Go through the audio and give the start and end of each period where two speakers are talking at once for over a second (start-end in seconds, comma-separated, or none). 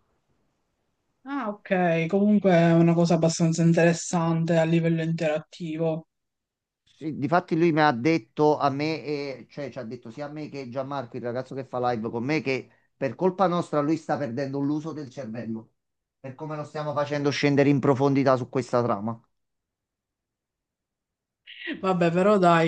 none